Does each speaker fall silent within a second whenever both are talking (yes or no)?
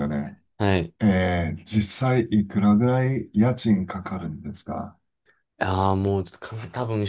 yes